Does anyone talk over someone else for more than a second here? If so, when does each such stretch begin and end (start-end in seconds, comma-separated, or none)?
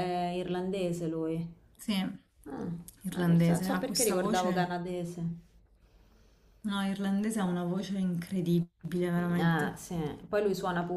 3.2-4.7